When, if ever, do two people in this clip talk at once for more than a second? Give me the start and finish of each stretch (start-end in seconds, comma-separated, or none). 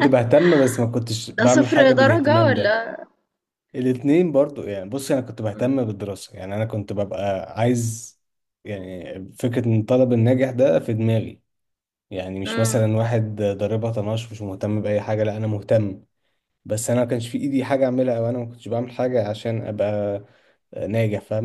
1.4-2.8